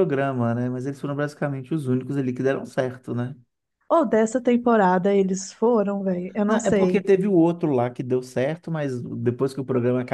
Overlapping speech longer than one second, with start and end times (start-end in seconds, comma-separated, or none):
none